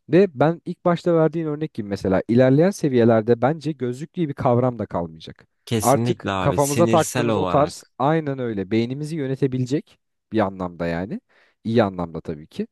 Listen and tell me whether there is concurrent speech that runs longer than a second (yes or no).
yes